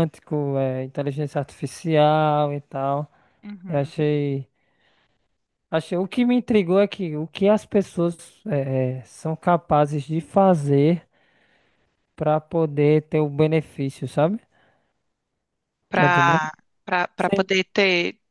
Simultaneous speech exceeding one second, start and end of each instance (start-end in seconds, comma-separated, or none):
none